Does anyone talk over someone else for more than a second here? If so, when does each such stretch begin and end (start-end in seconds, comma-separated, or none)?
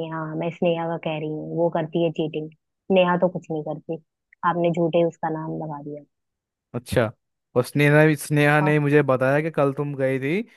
none